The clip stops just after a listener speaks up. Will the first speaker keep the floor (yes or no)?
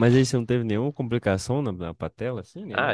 no